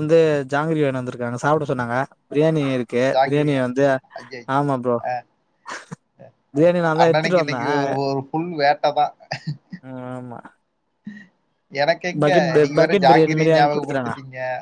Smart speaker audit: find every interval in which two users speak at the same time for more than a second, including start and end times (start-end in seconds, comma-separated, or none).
12.2-14.1